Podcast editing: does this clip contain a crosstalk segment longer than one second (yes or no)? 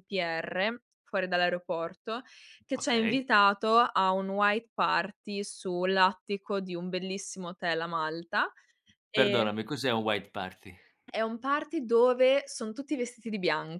no